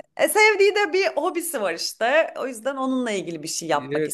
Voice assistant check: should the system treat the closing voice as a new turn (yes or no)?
yes